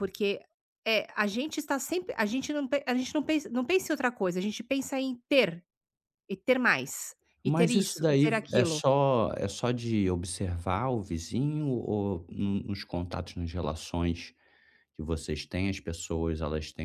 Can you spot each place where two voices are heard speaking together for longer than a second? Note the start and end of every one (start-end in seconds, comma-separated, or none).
7.4-8.8